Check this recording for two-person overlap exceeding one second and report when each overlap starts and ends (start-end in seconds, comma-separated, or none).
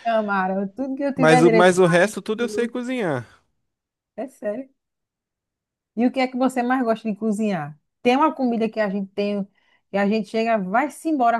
1.2-2.7